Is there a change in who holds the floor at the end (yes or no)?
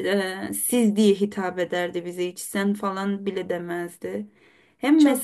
no